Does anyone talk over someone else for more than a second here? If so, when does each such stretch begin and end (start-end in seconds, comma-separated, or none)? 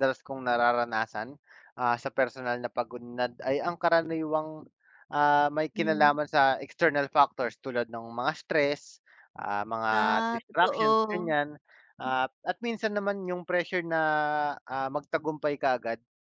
9.9-11.3